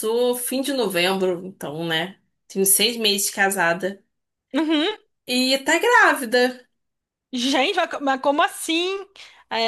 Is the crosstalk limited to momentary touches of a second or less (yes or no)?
yes